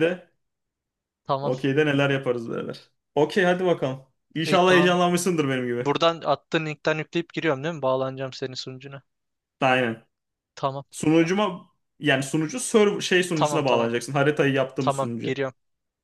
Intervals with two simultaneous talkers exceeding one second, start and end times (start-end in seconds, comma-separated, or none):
none